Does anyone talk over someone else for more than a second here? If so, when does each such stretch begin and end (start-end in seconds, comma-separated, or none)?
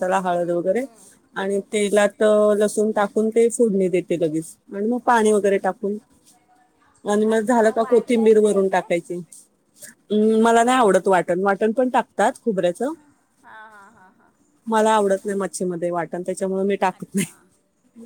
7.3-8.9